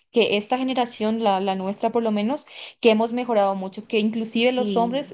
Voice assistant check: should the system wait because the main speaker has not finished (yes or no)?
yes